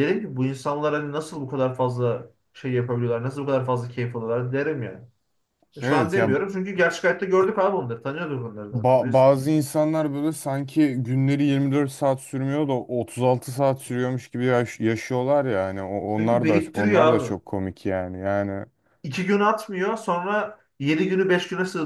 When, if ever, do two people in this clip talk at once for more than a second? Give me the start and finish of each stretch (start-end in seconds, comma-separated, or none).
16.2-17.4